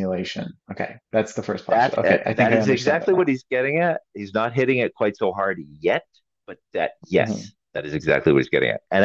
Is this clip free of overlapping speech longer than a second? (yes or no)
no